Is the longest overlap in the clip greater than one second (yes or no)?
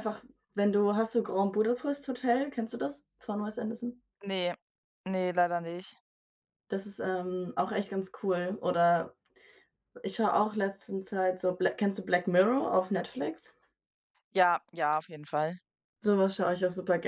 no